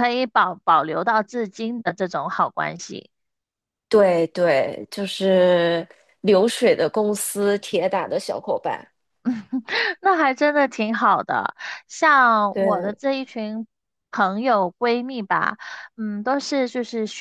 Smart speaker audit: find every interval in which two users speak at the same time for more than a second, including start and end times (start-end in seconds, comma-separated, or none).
none